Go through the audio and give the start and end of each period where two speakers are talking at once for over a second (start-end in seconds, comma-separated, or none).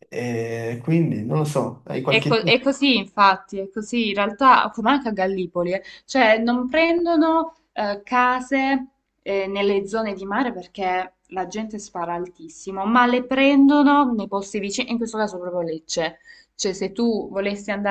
none